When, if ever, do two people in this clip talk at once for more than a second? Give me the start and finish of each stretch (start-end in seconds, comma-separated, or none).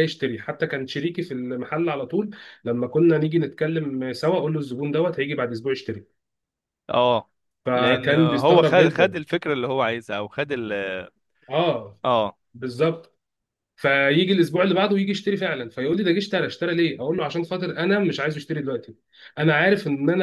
7.7-9.2